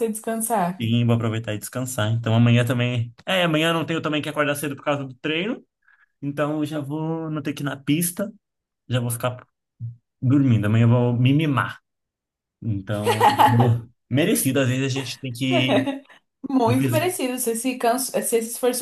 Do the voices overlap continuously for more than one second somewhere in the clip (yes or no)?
no